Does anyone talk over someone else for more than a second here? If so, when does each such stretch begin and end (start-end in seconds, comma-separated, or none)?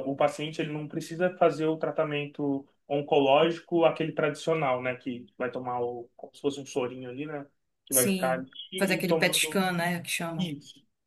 7.9-9.6